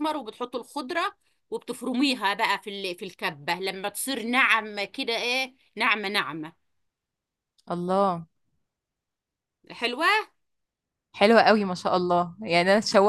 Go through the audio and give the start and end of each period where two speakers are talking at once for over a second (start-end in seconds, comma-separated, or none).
none